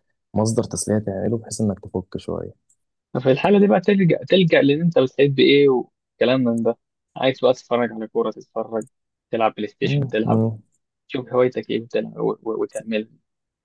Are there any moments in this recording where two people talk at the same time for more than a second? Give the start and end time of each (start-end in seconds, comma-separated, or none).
none